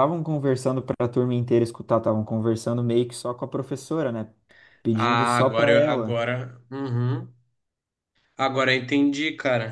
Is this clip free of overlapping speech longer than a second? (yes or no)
no